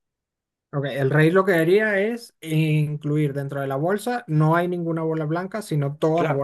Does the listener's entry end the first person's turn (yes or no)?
yes